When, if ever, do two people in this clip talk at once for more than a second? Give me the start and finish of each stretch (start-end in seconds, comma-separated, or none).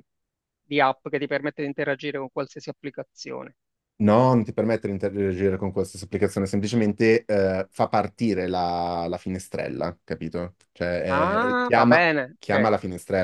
11.1-12.7